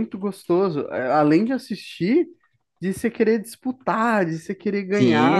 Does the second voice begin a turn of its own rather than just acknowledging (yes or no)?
yes